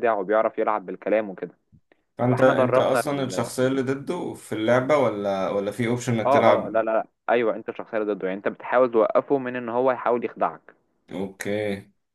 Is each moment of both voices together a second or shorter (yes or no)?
no